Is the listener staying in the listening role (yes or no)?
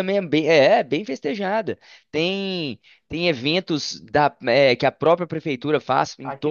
yes